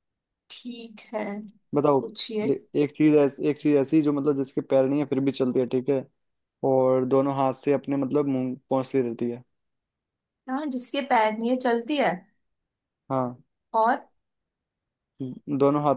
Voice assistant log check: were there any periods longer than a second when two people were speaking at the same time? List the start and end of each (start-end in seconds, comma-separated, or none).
none